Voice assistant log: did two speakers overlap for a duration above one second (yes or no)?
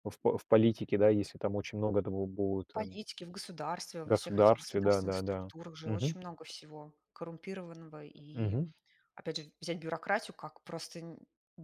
yes